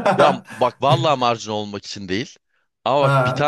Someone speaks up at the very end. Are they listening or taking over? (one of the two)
listening